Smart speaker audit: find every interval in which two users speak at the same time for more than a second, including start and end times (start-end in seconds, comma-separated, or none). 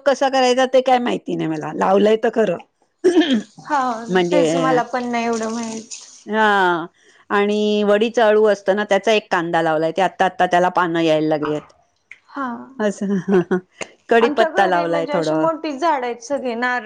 14.2-15.5